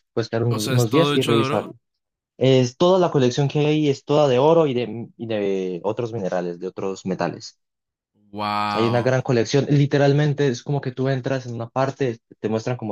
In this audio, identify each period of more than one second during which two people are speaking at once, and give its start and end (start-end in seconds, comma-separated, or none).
0.5-1.7